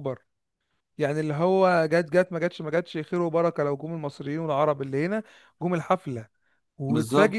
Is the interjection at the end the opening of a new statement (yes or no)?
no